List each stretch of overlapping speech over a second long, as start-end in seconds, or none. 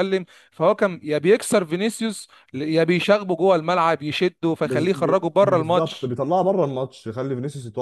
4.6-6.2